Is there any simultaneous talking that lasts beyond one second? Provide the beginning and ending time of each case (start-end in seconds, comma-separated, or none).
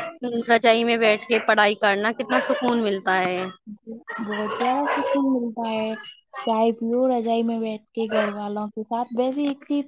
none